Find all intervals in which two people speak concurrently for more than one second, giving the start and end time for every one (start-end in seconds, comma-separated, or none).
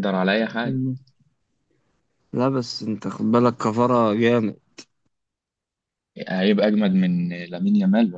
none